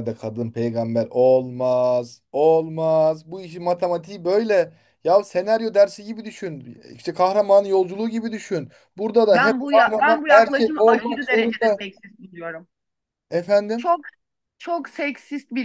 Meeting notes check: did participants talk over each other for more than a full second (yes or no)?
yes